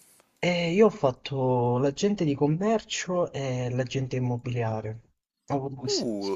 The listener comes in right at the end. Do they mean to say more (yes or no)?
yes